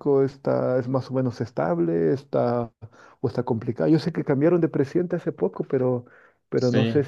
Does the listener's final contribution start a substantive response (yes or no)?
no